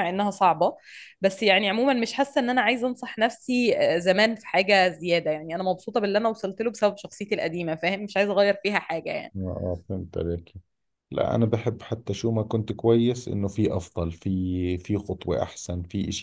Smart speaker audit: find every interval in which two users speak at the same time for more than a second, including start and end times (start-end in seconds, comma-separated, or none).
none